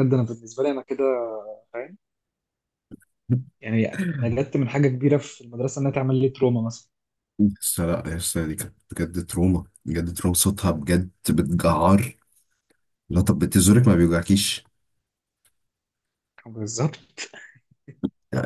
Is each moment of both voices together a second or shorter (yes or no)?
yes